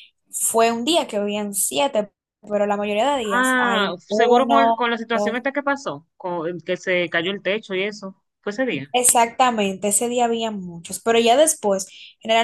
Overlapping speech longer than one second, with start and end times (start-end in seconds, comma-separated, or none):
3.3-5.4